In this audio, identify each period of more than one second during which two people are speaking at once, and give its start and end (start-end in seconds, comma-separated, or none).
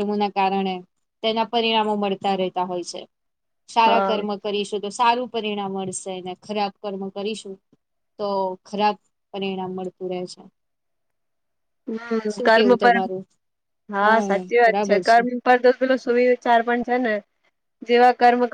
none